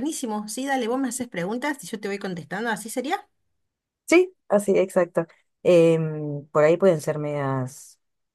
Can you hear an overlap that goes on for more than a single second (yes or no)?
no